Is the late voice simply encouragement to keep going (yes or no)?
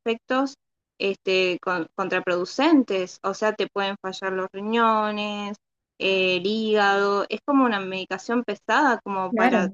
no